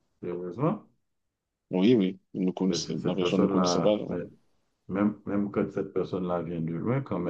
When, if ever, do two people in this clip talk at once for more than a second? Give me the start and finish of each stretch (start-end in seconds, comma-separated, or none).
2.7-4.2